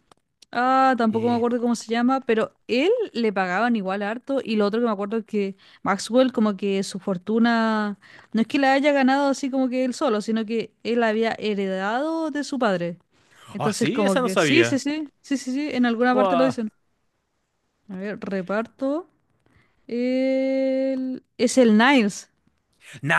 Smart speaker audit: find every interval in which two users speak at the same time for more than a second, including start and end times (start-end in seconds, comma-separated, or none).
13.6-14.8